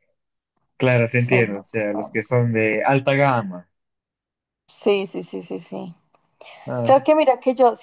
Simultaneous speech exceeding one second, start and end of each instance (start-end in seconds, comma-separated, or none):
1.0-2.2